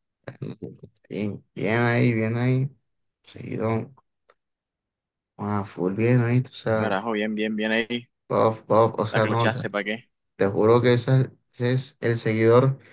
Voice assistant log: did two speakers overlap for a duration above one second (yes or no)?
no